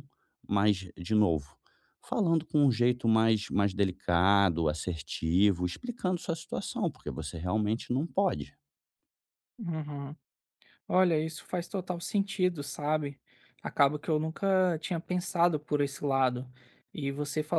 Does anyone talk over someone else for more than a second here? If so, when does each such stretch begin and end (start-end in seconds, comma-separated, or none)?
none